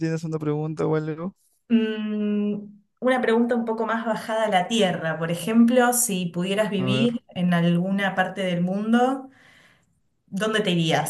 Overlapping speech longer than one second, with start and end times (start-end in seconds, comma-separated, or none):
none